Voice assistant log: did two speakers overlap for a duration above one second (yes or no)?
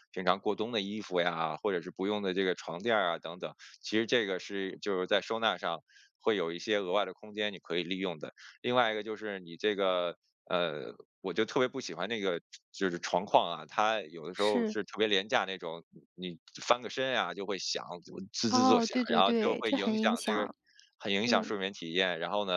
yes